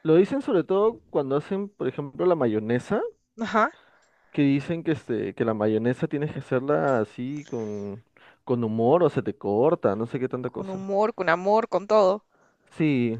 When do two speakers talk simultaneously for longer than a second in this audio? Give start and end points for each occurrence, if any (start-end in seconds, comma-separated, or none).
none